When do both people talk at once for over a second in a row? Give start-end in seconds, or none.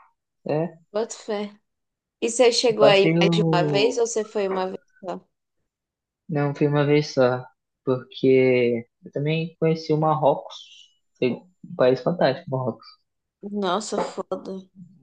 2.7-4.0